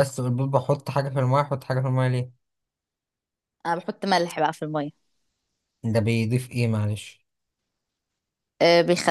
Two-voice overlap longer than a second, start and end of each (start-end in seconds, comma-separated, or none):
none